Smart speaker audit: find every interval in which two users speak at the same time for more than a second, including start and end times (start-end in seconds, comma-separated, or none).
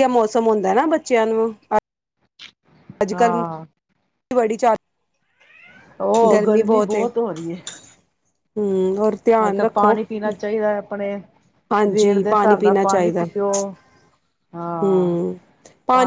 11.7-13.2